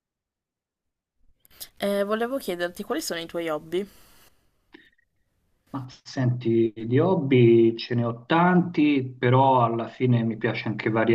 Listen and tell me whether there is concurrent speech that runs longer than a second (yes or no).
no